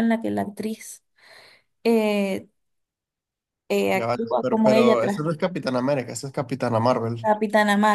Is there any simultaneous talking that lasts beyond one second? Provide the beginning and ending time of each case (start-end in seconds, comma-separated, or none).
3.9-5.2